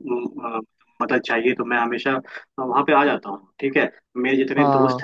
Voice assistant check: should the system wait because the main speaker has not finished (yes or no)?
yes